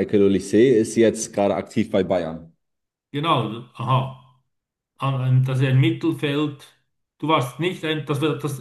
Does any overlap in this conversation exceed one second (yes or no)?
no